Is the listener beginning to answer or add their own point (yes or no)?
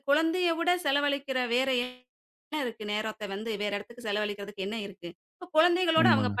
no